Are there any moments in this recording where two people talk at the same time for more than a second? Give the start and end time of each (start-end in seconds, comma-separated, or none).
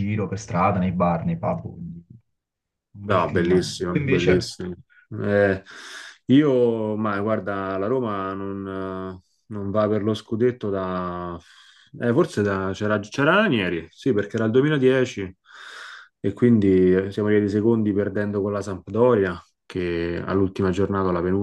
3.0-4.5